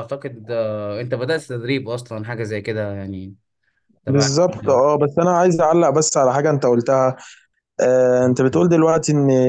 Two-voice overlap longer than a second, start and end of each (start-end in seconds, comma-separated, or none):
none